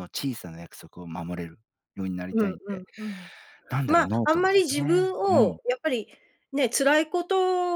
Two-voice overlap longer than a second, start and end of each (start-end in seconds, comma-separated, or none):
3.9-5.6